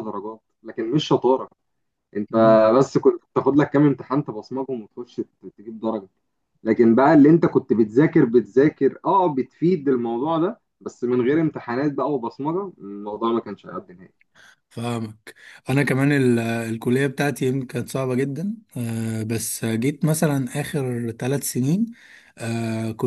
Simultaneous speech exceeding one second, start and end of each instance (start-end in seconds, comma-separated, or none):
none